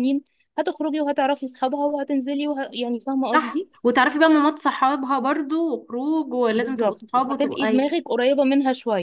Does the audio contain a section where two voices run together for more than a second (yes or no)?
yes